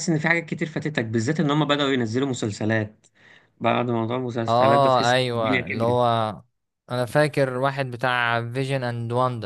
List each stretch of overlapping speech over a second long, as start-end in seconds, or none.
4.5-6.0